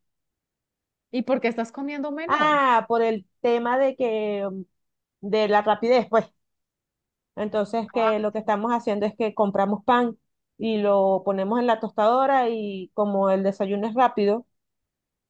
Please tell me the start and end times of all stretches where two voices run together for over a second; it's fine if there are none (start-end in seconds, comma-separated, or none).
none